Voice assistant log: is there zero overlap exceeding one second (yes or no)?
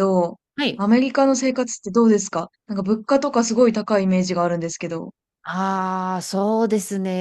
yes